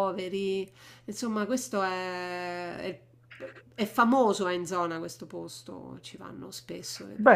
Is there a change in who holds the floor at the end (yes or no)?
yes